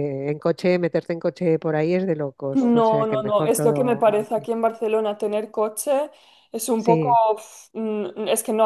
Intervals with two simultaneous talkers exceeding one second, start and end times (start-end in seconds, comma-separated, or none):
2.5-4.5